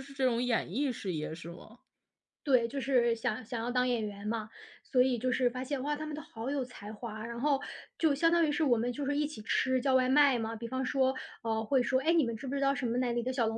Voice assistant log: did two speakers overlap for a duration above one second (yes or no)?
no